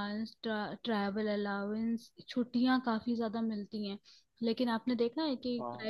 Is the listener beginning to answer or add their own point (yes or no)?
no